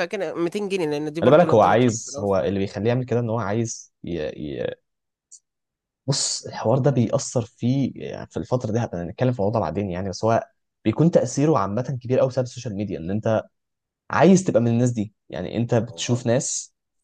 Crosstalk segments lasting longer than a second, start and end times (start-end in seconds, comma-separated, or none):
1.2-2.6